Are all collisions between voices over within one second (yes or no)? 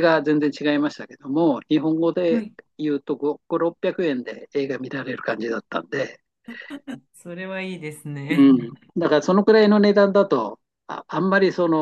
yes